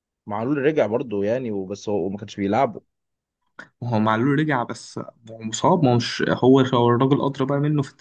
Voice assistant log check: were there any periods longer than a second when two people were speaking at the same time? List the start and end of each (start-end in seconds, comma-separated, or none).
none